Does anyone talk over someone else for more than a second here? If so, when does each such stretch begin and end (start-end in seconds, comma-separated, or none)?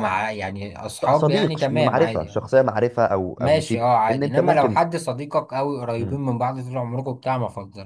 1.1-2.5, 3.4-4.9